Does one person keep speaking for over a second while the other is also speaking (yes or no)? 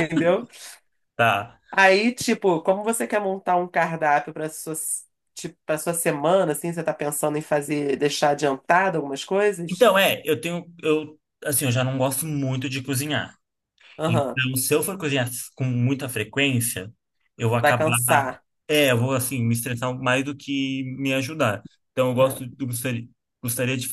no